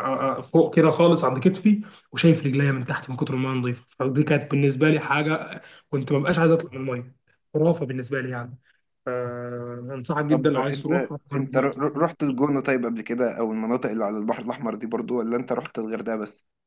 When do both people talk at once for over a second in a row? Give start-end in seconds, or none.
10.3-11.7